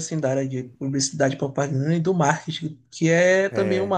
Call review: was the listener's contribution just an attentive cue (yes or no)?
yes